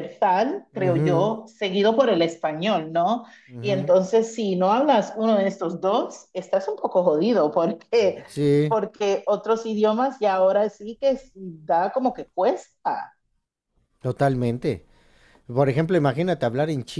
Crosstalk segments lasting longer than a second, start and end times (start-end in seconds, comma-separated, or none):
none